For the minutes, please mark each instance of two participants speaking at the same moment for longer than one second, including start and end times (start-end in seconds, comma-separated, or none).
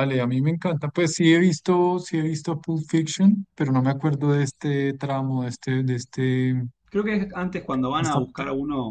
none